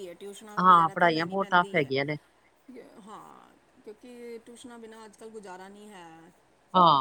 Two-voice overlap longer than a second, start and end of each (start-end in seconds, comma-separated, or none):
0.6-1.9